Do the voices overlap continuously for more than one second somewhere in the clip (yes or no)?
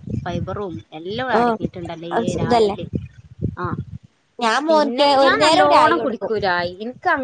yes